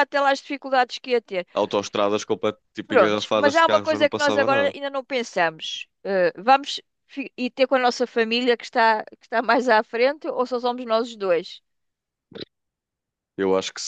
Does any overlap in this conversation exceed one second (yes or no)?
yes